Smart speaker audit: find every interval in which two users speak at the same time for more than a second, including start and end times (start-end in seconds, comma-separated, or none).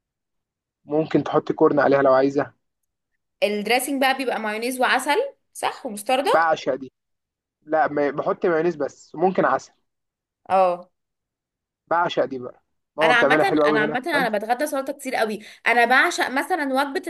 13.0-14.3